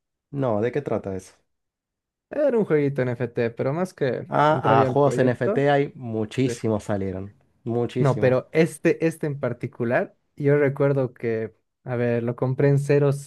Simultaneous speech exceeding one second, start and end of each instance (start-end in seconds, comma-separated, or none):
4.3-5.7